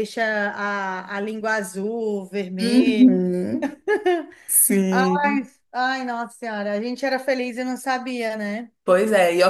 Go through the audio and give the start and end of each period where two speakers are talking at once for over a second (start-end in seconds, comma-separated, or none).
none